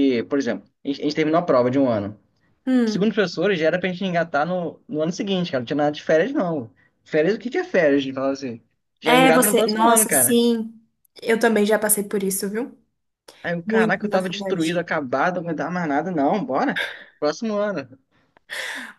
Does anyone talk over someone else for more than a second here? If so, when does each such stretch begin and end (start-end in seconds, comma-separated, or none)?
9.0-10.4, 13.6-14.9